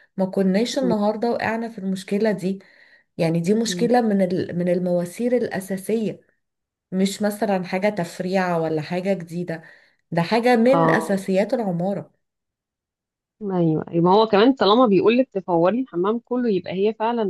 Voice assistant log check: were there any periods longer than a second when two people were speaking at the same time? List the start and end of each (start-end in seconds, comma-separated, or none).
none